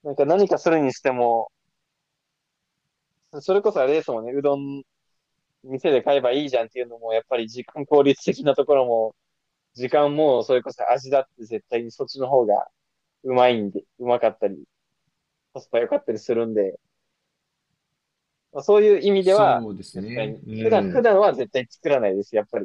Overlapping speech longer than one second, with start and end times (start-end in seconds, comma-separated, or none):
19.2-21.0